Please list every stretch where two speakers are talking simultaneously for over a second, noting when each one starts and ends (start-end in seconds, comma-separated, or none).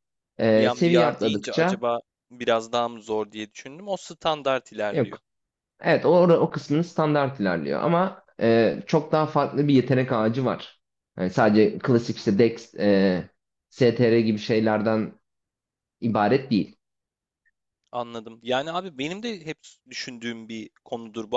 0.6-1.8